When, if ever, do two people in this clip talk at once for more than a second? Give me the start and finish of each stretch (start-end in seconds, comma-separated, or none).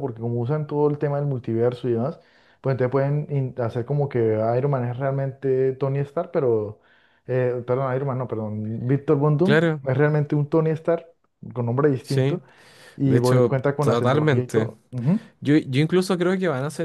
13.0-14.7